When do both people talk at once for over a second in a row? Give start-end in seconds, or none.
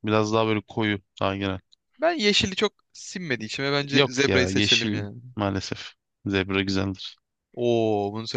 3.9-5.2